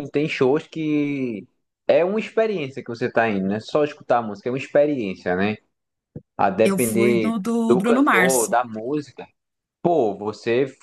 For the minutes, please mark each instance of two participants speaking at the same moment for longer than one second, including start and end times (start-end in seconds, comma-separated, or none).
6.6-8.5